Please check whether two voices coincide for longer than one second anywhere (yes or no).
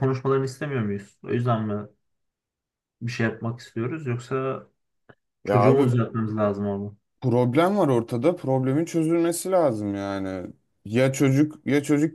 no